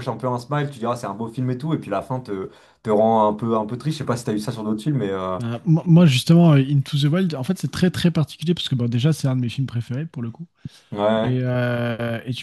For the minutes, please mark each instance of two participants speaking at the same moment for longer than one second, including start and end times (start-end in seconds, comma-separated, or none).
none